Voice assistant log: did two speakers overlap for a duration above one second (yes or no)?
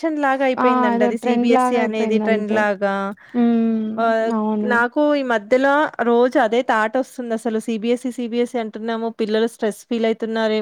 yes